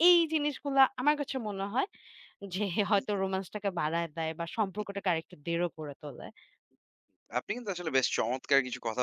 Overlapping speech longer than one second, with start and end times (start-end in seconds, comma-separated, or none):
none